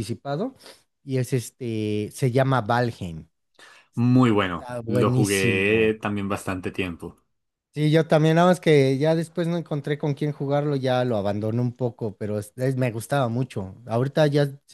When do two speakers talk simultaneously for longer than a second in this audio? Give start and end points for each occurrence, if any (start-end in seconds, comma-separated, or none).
4.6-5.9